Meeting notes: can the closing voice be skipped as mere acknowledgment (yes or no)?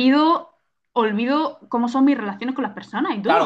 no